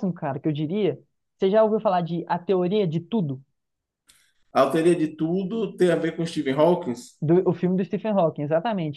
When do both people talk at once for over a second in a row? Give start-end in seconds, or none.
none